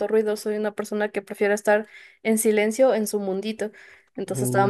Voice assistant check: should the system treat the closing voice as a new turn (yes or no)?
no